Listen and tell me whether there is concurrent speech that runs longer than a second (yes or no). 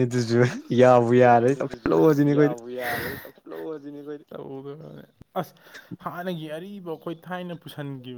yes